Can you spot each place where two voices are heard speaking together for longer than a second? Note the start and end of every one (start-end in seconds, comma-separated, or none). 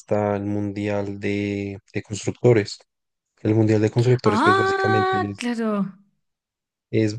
4.2-5.5